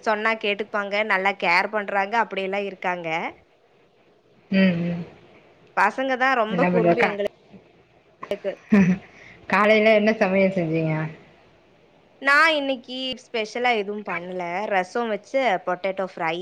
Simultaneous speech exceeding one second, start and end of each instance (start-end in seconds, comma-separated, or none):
none